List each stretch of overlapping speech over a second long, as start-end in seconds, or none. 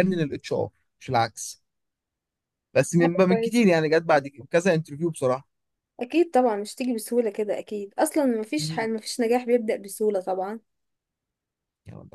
none